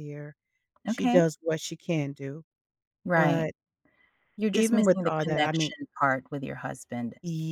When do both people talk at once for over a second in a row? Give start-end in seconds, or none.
4.5-5.7